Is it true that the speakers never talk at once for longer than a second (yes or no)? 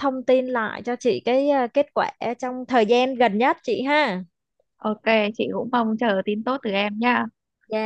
yes